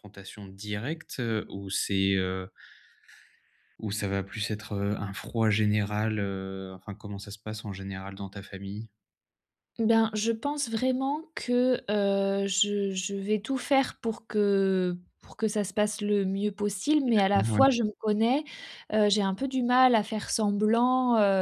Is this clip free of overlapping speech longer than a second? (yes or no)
yes